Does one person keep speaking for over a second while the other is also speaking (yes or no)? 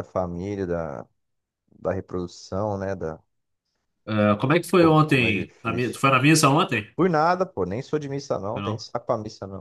yes